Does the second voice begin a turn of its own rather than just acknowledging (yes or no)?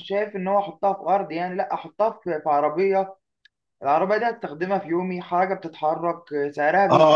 yes